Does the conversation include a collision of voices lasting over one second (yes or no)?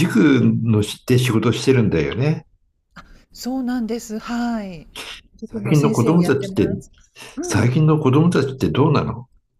yes